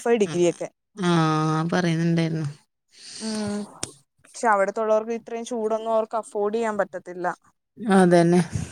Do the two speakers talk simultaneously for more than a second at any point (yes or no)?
no